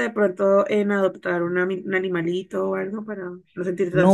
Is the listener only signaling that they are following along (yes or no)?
no